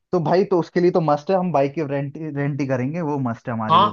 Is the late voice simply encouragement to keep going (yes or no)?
no